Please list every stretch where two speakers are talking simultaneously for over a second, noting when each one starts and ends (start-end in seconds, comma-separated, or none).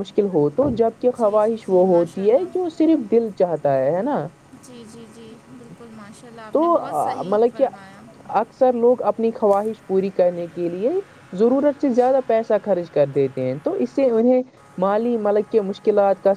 1.2-2.7